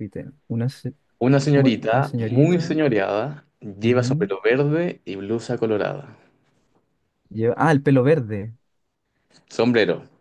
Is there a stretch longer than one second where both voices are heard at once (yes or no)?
yes